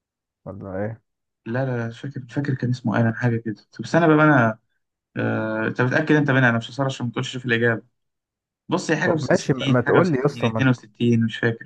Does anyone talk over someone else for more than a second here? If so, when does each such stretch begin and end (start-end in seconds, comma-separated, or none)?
9.0-10.8